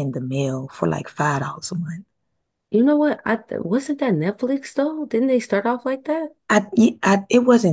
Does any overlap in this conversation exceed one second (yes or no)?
no